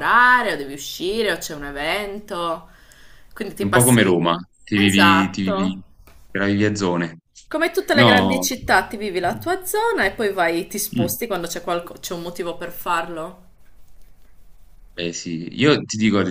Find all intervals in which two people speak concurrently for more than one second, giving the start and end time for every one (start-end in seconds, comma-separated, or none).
3.6-5.8